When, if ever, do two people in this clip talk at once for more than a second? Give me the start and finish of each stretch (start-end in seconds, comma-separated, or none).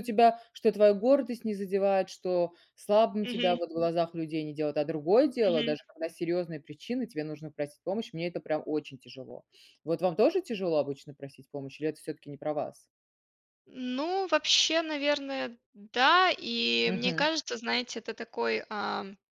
none